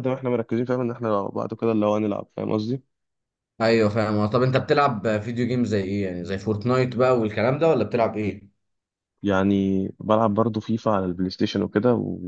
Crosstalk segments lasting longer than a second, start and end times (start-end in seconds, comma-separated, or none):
none